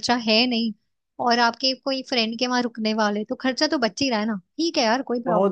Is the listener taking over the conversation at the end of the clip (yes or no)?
yes